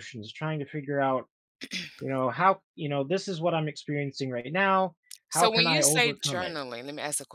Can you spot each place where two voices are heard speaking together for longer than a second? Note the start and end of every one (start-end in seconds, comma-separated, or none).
5.3-6.6